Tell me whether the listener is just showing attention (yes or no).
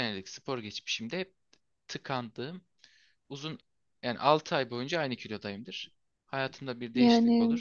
yes